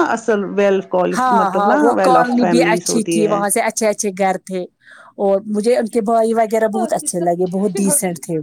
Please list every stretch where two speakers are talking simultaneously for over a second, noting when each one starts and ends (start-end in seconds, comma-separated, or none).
1.4-3.4